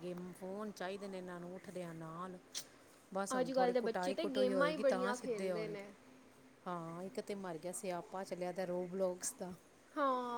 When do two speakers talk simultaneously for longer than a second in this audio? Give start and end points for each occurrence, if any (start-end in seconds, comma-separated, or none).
3.4-5.9